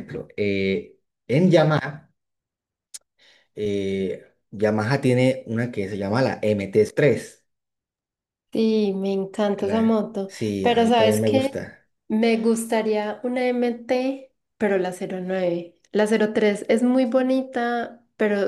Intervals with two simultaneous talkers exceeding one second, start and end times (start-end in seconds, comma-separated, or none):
9.6-11.6